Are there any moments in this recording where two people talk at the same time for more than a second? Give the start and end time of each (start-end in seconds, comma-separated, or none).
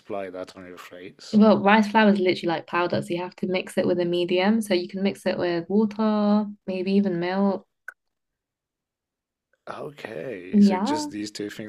none